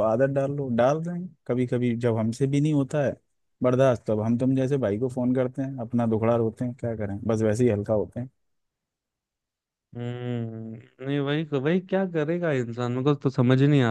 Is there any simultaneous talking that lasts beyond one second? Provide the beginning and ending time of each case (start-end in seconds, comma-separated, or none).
none